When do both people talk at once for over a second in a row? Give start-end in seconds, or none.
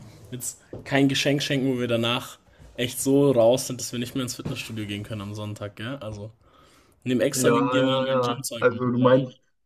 7.3-8.8